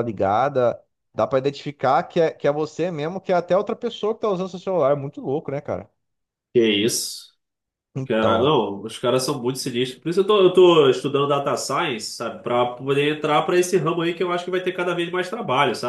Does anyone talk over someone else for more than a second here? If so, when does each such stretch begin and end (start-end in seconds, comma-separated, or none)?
none